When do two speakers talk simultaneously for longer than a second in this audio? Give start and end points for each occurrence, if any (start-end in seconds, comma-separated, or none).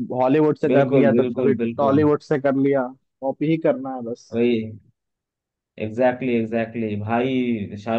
0.7-2.0